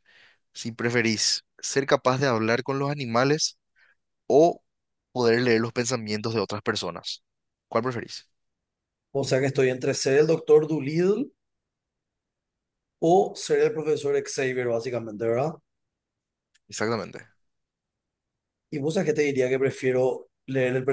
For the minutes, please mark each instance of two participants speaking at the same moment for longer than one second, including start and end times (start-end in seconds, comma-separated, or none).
none